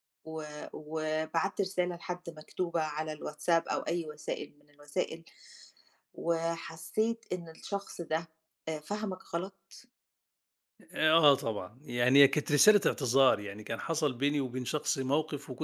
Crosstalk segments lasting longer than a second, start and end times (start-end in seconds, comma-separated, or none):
none